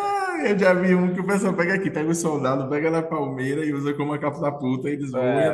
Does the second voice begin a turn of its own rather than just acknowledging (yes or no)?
yes